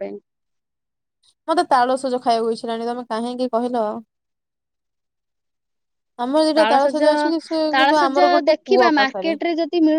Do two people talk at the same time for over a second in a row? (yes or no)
yes